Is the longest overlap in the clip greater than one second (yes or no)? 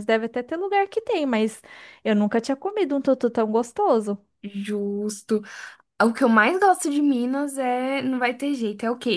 no